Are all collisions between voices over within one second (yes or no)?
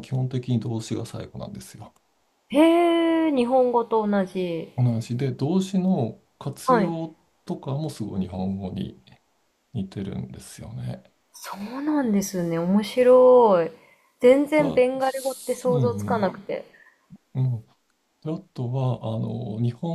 no